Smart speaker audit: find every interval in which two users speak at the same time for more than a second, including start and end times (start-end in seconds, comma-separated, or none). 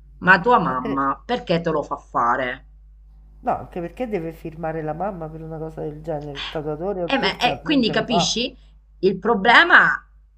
7.0-8.3